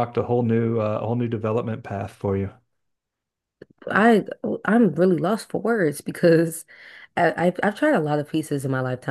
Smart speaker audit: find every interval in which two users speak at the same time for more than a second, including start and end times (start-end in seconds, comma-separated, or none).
none